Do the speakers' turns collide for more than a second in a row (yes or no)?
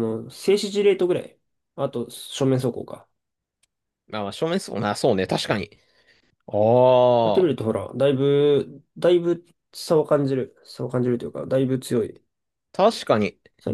no